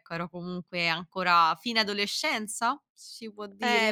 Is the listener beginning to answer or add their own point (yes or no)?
yes